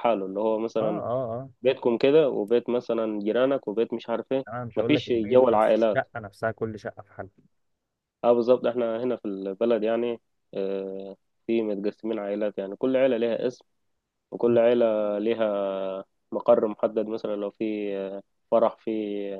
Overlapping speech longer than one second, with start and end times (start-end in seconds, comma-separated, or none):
4.5-6.0